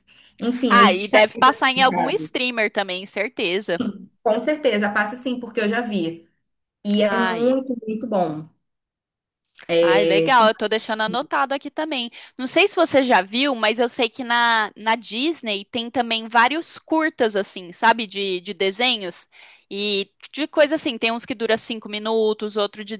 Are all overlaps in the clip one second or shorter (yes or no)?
no